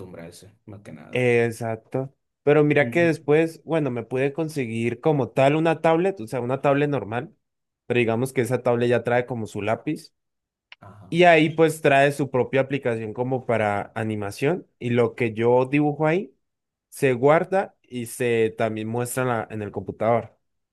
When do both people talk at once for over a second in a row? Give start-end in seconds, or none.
none